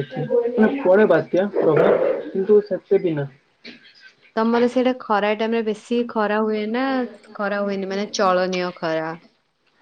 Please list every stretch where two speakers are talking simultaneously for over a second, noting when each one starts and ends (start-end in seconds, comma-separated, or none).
none